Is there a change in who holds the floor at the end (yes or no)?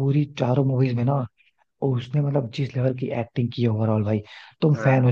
no